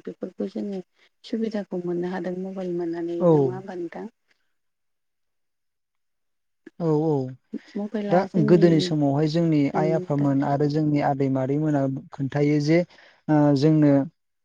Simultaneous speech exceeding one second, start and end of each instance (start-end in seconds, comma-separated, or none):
none